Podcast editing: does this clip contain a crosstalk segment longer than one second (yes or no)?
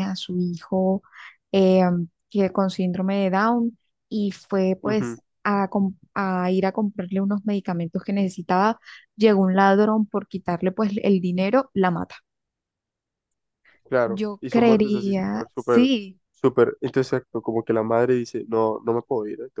yes